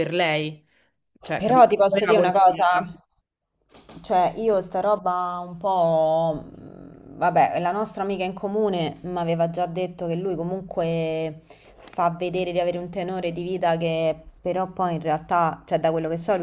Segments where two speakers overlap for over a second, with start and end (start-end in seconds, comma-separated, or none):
1.4-2.8